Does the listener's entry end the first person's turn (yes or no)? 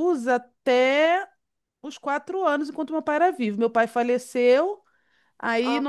no